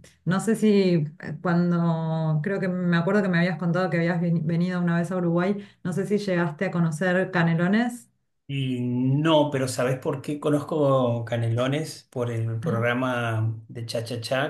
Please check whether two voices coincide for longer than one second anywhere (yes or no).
no